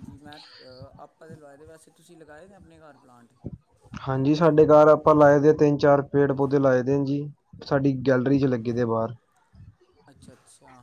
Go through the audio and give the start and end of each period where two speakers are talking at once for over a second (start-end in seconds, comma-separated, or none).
none